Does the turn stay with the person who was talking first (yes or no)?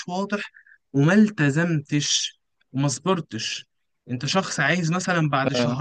yes